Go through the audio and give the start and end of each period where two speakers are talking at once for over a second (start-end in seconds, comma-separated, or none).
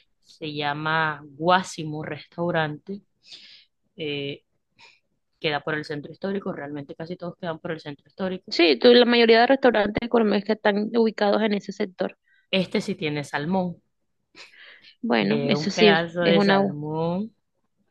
15.2-16.8